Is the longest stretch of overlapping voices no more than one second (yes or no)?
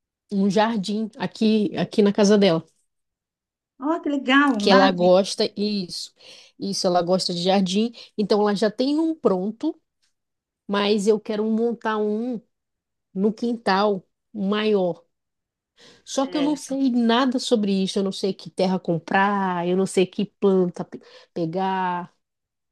yes